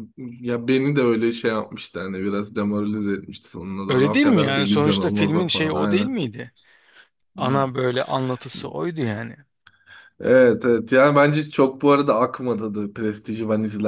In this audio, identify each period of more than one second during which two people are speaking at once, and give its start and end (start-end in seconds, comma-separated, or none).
3.9-6.1